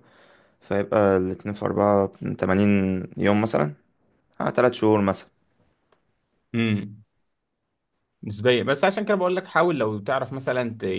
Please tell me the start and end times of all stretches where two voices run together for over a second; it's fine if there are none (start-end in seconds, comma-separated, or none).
none